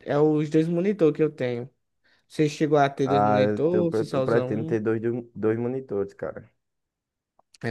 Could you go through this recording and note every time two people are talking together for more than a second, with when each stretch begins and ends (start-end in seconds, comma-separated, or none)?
3.0-4.8